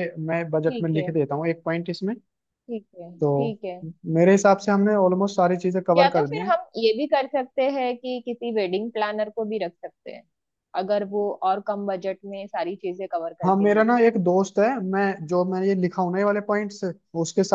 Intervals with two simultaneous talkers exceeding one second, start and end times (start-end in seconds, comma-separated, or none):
none